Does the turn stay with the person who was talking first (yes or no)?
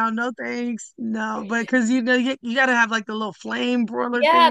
no